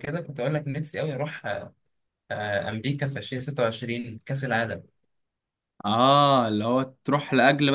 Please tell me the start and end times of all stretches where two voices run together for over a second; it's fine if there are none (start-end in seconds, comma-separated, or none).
none